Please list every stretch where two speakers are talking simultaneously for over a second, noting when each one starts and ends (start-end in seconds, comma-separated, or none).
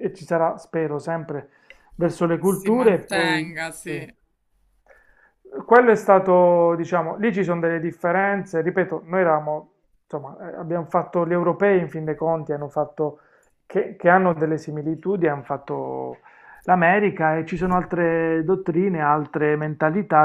2.4-4.0